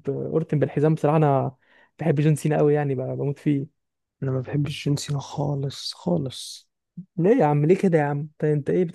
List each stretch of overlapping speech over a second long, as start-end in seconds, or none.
none